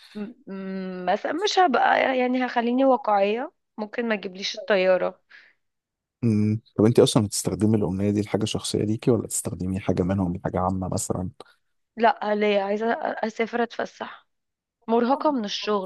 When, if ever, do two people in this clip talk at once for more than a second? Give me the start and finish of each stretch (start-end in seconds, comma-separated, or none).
none